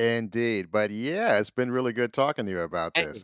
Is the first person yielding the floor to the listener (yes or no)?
yes